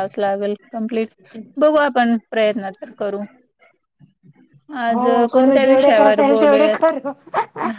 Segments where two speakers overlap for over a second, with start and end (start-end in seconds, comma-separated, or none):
4.9-6.8